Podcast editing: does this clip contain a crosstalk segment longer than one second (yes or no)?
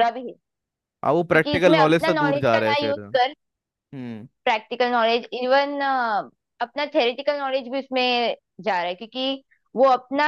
yes